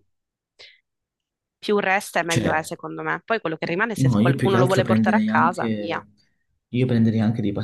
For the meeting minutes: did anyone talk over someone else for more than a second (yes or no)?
yes